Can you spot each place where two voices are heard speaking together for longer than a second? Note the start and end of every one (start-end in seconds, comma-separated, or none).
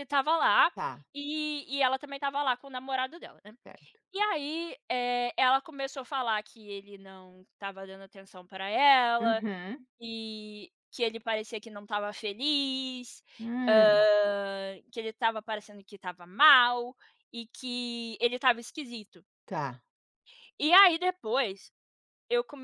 none